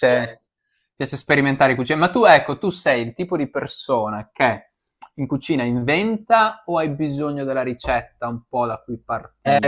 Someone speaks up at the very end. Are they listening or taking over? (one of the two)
taking over